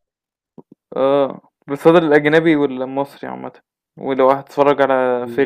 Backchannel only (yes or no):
no